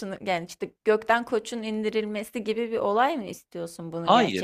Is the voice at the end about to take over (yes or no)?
yes